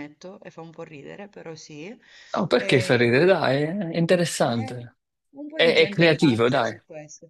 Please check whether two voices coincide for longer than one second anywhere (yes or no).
yes